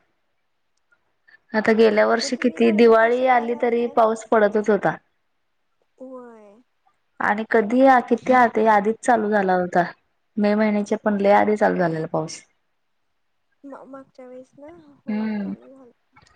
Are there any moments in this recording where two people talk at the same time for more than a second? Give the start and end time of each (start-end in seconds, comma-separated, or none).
2.2-4.0